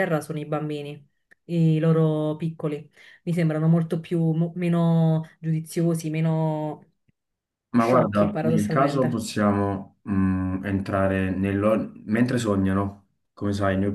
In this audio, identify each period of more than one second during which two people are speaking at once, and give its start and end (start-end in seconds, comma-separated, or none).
7.7-9.3